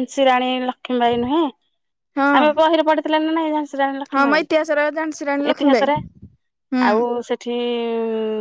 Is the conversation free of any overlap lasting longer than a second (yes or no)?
no